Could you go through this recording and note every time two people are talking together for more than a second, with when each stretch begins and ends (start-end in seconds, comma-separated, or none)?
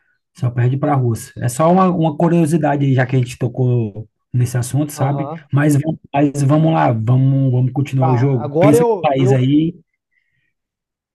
8.0-9.5